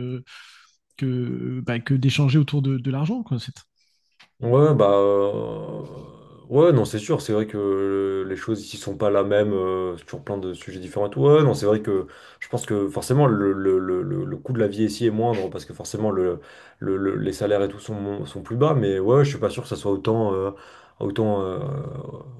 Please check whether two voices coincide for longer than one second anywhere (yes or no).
no